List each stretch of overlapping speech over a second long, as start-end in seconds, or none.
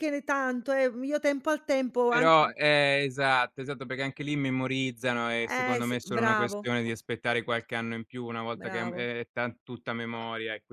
5.5-6.7